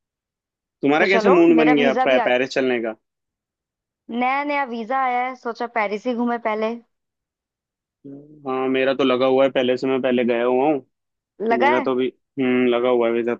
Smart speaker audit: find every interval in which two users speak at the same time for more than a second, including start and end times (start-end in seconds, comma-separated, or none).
1.0-2.4